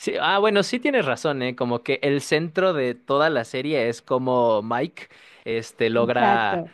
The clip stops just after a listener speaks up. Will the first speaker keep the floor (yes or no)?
yes